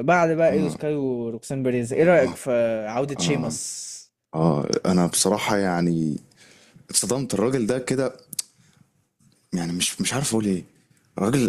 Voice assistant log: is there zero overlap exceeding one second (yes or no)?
yes